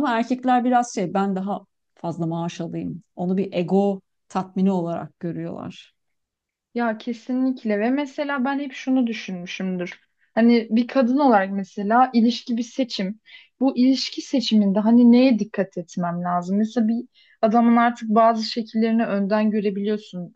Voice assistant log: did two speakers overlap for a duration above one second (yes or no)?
no